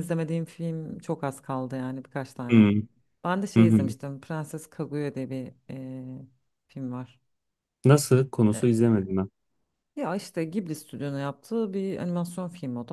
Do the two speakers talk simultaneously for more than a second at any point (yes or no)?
no